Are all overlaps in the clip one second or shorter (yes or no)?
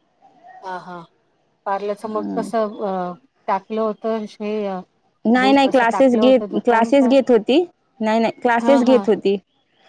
no